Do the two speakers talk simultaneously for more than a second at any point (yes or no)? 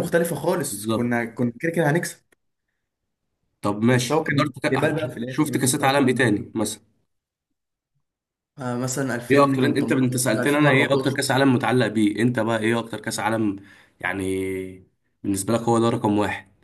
yes